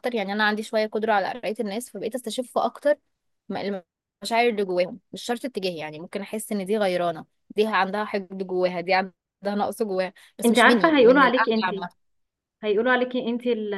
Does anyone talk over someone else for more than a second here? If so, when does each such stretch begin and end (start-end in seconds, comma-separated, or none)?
10.4-11.7